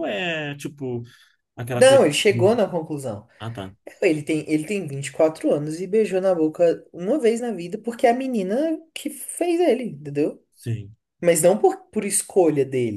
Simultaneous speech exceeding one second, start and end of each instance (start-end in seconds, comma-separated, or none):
none